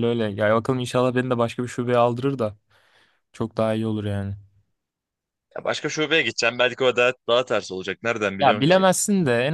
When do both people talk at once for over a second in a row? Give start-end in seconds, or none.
none